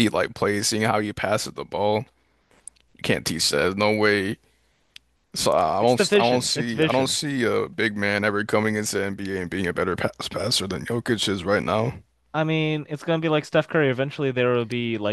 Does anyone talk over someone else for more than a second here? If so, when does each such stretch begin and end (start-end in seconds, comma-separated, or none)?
5.8-7.2